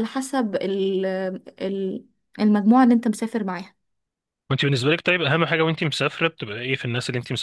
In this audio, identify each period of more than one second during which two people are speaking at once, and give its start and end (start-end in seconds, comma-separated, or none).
none